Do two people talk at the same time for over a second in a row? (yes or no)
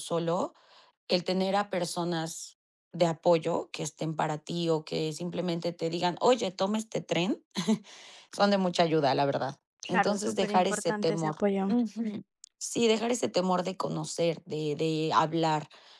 yes